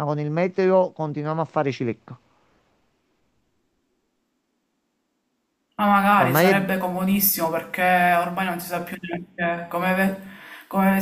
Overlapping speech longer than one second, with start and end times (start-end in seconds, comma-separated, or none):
none